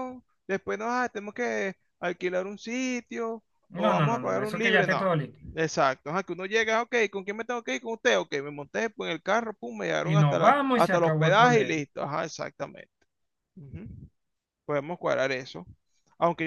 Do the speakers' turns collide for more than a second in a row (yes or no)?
yes